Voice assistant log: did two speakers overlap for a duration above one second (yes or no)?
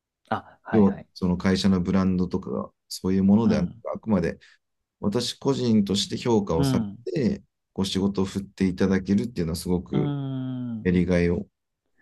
no